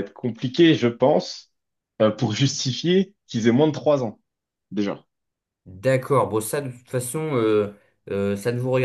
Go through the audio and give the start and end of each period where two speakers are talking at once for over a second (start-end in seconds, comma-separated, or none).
none